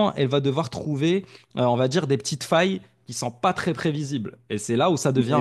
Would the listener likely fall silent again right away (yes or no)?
no